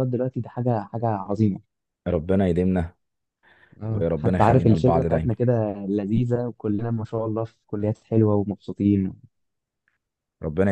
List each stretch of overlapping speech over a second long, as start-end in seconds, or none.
3.9-5.3